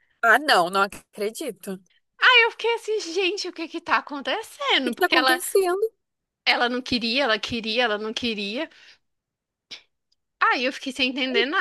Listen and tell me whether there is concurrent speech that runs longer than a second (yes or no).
no